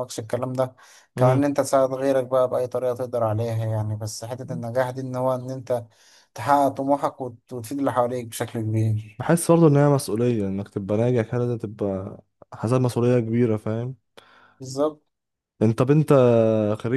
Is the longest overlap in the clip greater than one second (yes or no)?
no